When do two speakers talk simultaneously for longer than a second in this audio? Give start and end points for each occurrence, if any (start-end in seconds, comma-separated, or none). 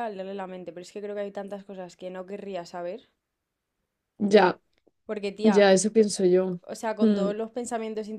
none